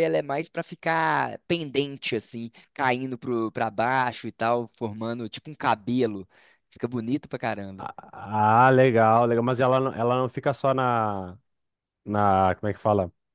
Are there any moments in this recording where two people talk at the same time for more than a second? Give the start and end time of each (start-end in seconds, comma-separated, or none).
none